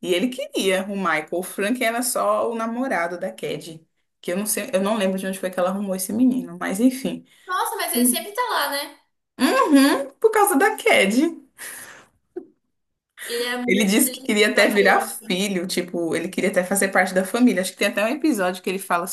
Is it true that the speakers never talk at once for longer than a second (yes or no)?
no